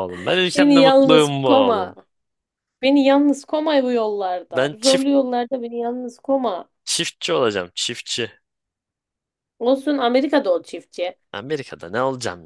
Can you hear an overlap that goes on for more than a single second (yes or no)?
yes